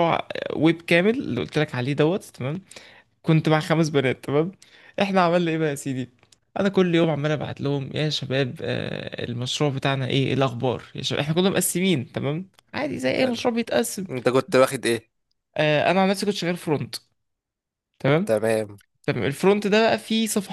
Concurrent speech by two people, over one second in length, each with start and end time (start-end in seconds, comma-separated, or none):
none